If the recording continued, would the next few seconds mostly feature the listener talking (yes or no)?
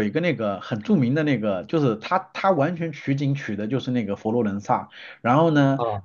no